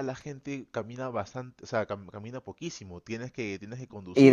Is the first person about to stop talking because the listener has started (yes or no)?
yes